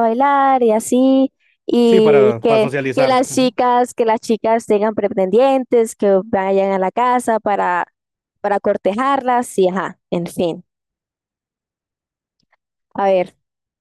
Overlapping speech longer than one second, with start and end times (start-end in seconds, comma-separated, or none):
1.8-3.6